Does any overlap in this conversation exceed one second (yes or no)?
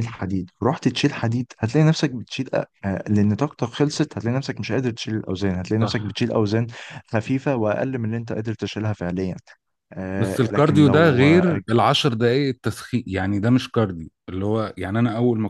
yes